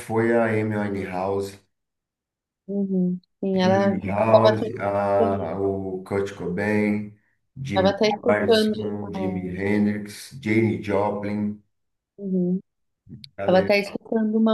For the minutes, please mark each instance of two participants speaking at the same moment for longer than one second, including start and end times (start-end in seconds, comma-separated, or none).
3.5-5.5, 7.7-9.6